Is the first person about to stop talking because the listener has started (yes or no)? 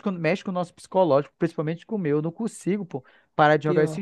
no